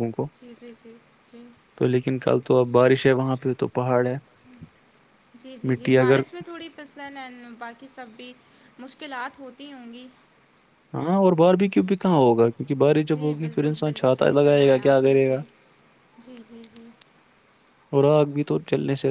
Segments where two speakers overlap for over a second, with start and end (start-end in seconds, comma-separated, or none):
13.1-15.4